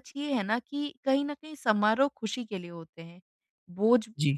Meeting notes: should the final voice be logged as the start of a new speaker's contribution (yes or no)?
no